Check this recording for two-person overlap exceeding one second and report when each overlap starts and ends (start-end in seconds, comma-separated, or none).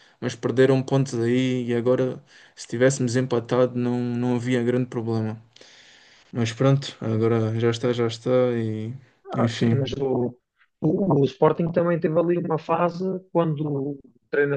none